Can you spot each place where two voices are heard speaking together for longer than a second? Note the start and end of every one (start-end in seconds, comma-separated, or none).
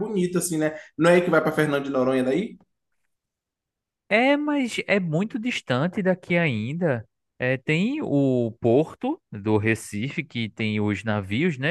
none